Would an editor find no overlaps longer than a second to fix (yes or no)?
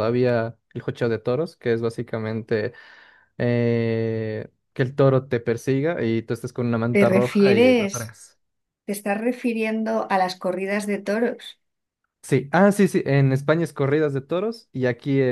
no